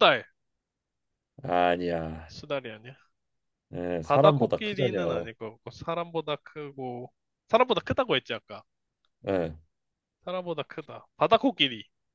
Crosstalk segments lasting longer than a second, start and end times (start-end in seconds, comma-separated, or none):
4.0-5.3